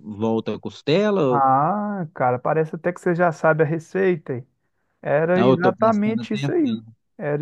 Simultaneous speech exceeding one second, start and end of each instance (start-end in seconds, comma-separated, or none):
5.3-6.8